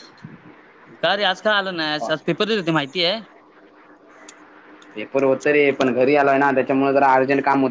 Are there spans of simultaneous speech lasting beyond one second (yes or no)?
no